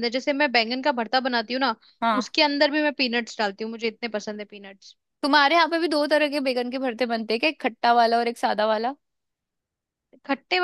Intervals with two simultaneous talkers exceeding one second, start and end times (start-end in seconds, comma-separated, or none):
none